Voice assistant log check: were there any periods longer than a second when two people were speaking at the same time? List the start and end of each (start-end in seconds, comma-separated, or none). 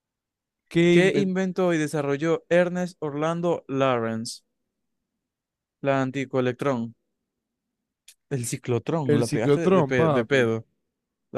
9.1-10.5